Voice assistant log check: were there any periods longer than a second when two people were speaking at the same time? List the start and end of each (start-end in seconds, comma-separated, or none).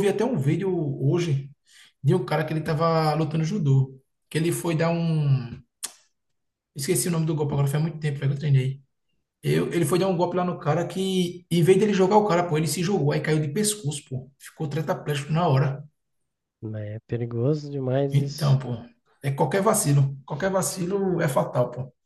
none